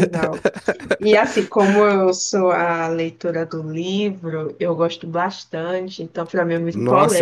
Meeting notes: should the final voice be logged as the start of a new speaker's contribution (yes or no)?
yes